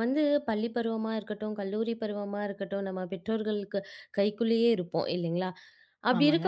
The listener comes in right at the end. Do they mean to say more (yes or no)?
no